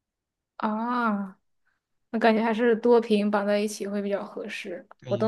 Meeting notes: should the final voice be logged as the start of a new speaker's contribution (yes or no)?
yes